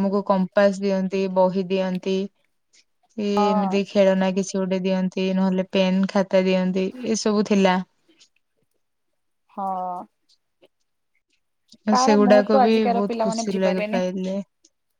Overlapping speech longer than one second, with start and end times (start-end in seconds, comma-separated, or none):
12.0-14.0